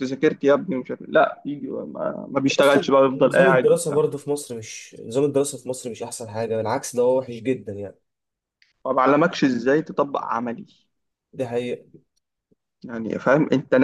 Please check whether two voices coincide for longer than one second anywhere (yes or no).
yes